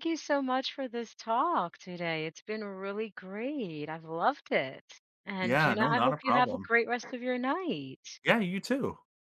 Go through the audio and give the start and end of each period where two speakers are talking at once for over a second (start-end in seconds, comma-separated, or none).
5.4-6.7